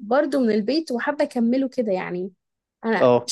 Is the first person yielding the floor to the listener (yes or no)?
no